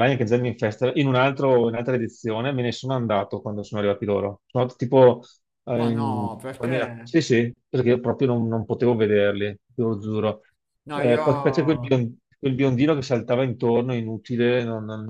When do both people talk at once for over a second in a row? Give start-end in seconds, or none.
5.8-7.1